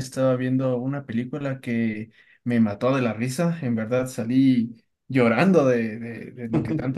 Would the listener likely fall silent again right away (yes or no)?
yes